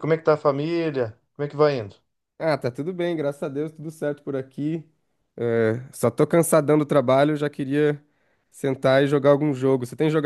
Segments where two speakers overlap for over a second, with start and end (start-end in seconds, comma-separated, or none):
none